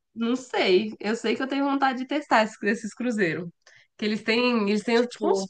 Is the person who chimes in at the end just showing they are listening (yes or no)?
yes